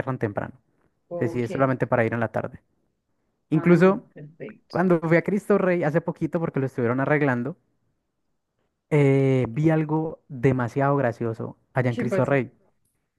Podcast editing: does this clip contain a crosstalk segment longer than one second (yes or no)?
no